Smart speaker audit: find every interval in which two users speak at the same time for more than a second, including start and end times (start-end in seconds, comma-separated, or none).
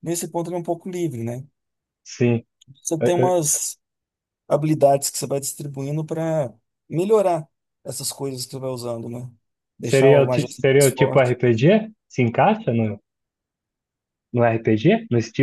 9.8-11.3